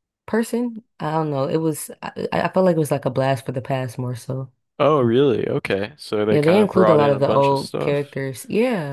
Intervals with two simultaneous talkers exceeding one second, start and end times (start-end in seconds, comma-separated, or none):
6.3-8.2